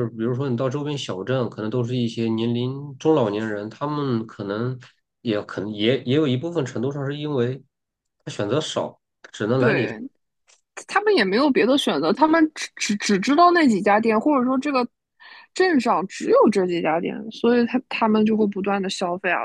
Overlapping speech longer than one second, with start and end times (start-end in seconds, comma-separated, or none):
none